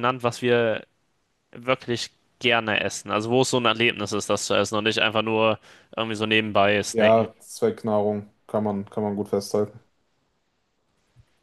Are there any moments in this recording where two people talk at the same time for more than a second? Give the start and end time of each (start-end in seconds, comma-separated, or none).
none